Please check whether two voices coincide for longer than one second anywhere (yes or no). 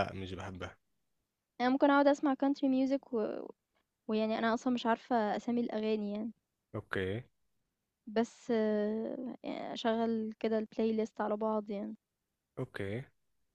no